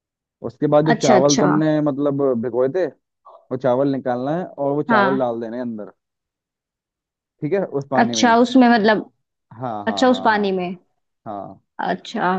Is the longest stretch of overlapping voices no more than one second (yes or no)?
yes